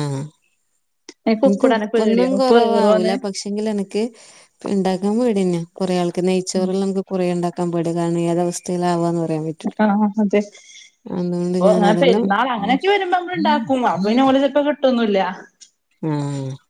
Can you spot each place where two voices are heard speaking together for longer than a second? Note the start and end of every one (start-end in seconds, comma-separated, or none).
1.5-3.1